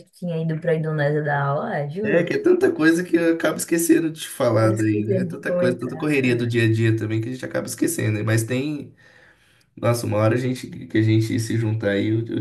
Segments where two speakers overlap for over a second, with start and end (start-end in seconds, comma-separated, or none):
4.5-6.5